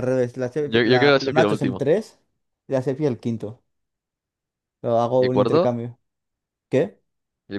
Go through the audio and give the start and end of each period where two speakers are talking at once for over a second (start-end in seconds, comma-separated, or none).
0.6-1.9